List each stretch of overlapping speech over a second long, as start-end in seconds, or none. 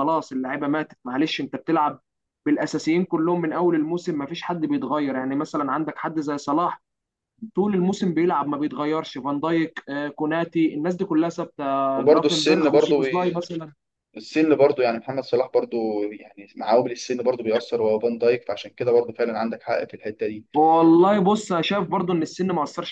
11.9-13.4